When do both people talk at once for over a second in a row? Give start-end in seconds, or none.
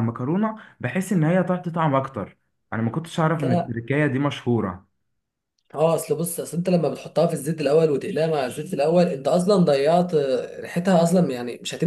none